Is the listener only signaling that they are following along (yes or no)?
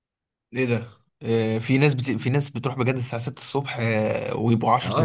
no